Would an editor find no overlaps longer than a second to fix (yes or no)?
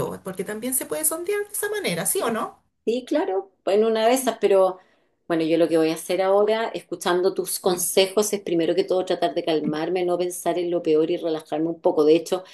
yes